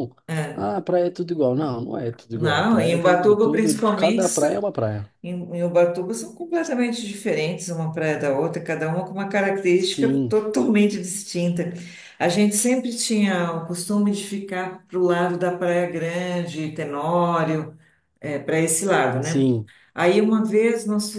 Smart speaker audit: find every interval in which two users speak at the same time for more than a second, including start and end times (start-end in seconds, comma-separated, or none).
2.3-4.2